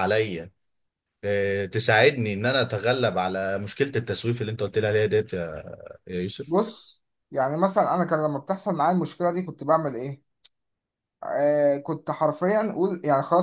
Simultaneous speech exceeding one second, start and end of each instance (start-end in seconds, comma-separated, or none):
none